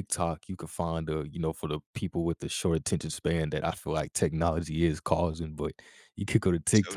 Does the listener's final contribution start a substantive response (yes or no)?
no